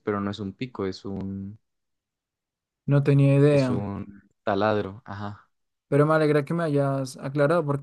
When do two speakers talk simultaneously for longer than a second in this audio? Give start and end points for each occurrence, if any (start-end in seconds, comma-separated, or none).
none